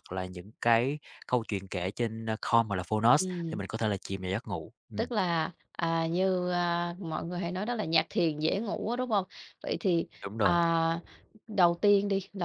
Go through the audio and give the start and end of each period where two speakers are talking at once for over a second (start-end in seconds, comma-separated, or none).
none